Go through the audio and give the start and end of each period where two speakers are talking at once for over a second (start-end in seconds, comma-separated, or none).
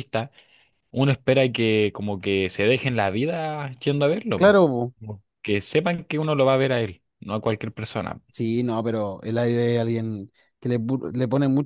none